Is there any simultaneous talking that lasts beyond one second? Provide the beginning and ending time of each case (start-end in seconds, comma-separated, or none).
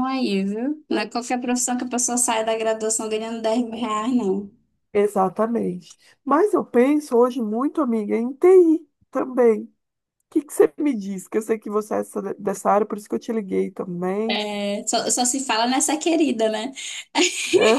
none